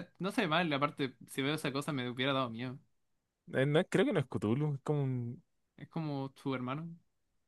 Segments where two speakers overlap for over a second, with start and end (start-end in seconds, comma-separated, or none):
none